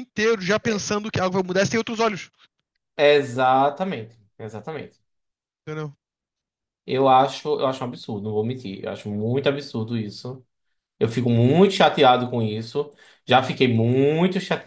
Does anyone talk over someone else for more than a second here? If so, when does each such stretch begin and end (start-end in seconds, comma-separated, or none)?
none